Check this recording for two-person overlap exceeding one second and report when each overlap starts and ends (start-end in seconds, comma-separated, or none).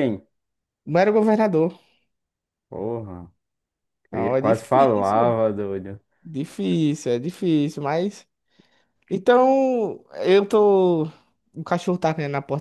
4.1-5.4